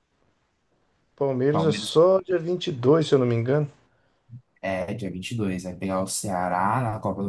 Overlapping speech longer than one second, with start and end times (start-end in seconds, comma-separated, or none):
none